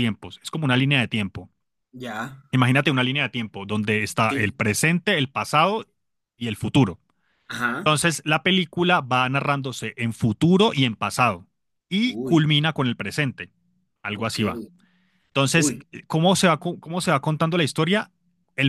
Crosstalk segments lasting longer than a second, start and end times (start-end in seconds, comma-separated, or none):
none